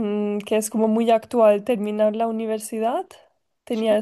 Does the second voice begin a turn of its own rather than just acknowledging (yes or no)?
no